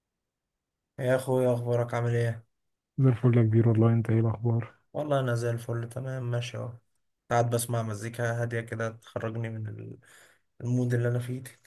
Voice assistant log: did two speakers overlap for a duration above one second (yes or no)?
no